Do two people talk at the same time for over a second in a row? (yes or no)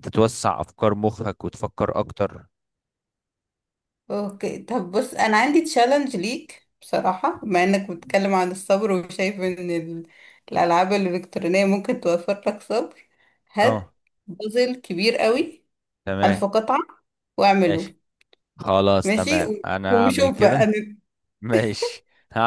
yes